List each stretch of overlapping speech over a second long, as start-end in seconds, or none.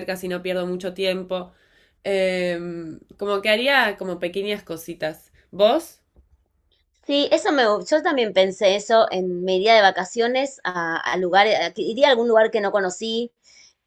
none